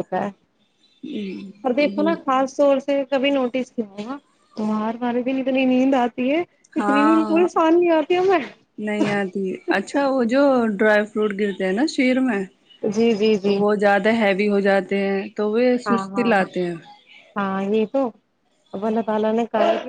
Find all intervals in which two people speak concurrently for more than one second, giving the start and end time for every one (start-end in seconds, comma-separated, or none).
none